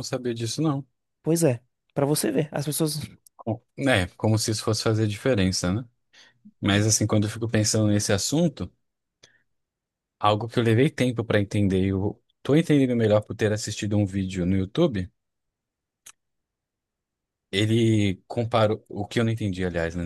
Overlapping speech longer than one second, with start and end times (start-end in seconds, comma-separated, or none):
none